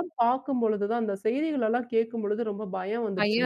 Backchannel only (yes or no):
no